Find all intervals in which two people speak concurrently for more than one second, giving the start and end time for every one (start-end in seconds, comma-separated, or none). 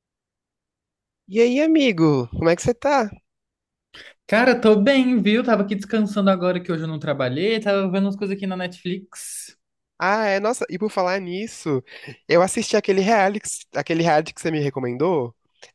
none